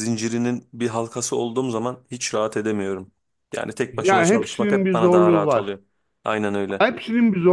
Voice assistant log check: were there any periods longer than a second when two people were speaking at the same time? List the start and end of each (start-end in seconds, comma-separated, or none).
3.9-5.8